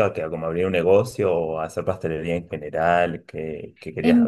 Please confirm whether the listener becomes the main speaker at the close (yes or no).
yes